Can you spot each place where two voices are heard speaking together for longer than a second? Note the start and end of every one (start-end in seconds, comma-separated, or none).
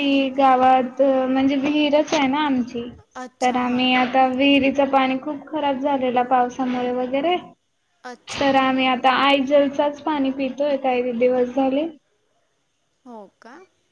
none